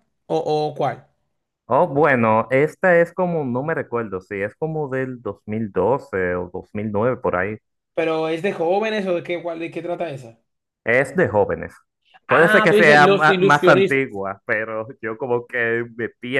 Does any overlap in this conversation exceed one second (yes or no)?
yes